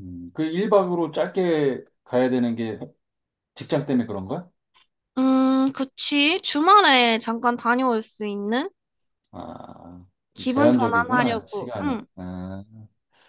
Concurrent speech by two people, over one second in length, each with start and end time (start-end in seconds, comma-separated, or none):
10.3-12.1